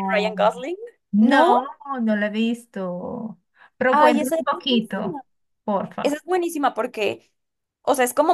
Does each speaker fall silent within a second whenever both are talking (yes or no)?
no